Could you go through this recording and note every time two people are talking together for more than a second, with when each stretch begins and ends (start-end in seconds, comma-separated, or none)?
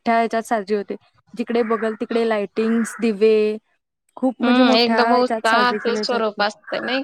4.4-6.4